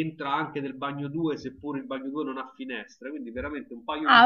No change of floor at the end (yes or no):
no